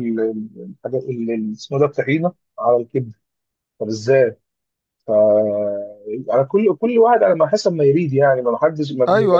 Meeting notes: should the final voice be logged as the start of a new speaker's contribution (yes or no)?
yes